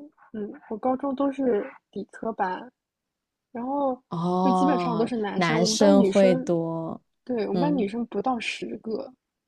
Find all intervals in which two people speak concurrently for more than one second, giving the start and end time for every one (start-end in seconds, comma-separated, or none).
4.4-6.5